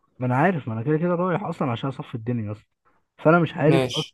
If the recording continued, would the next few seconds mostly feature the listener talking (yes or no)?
no